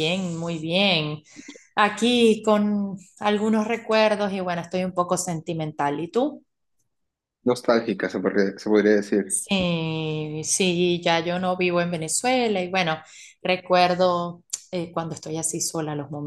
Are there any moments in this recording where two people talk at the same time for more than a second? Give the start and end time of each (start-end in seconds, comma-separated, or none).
none